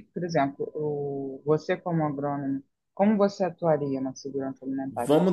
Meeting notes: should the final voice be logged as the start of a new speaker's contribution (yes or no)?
yes